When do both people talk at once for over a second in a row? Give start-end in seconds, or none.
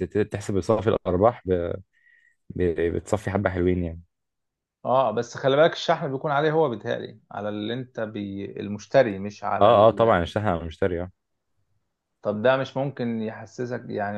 none